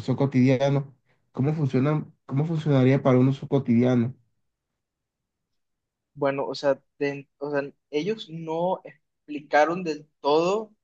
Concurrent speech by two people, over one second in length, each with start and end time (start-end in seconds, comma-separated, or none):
none